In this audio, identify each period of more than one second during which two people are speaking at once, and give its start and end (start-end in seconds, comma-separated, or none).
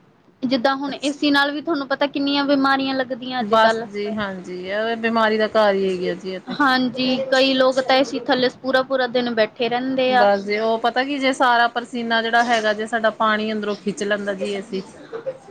none